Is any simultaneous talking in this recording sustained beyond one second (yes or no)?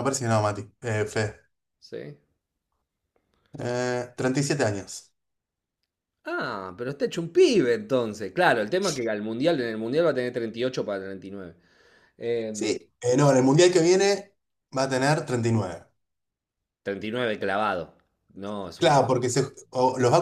no